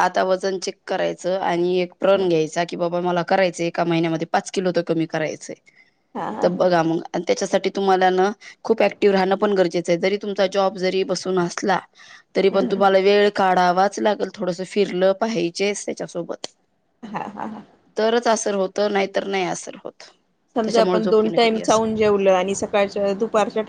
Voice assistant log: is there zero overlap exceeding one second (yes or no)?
no